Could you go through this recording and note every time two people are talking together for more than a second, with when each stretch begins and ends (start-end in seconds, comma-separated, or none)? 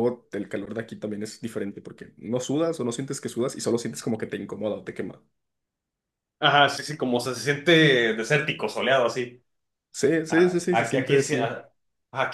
10.3-11.5